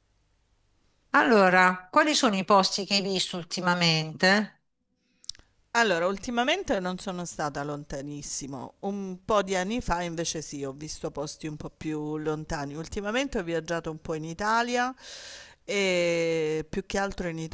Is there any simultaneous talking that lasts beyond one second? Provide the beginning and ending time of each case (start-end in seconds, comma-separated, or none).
none